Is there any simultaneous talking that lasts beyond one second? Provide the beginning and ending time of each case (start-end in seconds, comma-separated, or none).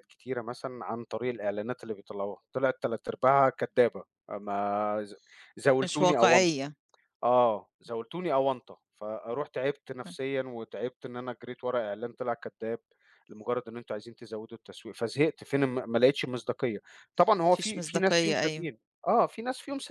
17.5-18.7